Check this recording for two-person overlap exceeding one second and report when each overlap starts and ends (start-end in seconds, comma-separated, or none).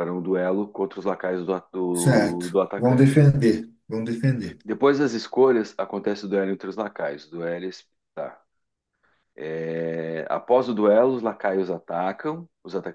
1.9-3.2